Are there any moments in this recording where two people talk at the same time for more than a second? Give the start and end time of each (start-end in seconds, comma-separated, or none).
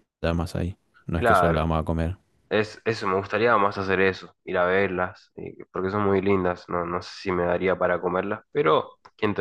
none